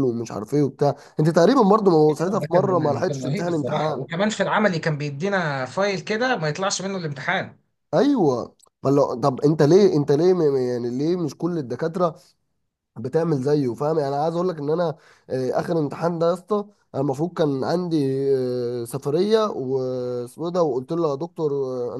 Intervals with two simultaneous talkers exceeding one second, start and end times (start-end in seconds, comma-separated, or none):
2.3-4.0